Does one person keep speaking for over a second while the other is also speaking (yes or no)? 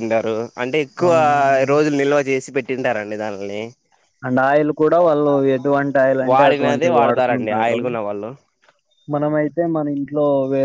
yes